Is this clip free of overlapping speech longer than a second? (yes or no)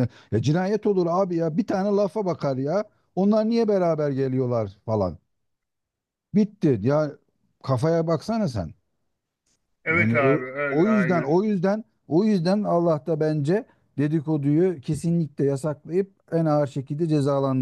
no